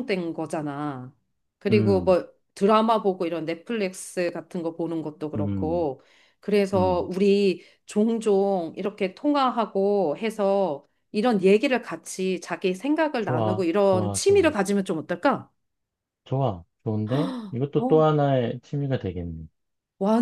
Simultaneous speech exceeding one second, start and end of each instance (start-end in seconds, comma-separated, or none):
13.2-14.5